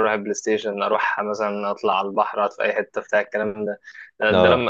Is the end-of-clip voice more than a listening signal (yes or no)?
no